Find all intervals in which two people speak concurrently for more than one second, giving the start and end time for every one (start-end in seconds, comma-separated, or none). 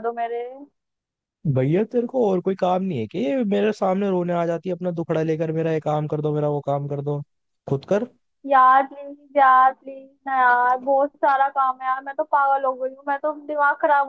none